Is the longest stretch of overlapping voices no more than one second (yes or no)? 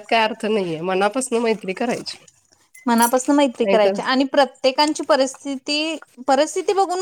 yes